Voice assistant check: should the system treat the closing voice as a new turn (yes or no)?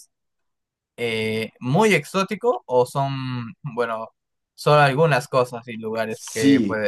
yes